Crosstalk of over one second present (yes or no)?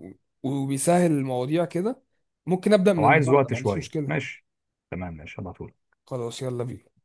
yes